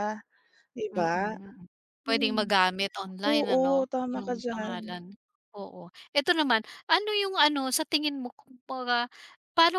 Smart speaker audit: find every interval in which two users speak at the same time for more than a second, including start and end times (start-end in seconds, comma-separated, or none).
3.2-4.8